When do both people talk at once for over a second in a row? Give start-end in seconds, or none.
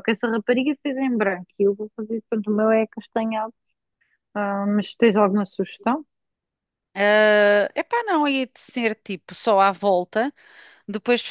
none